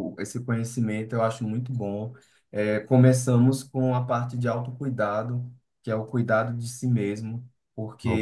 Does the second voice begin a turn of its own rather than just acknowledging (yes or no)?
no